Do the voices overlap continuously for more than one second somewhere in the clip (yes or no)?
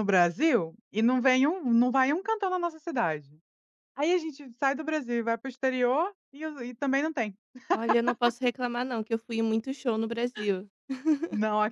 no